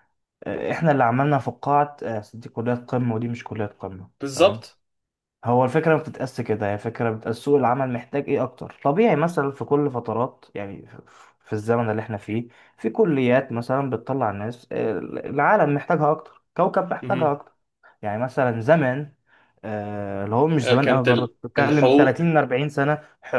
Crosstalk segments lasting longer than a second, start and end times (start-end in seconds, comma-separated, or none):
20.6-22.2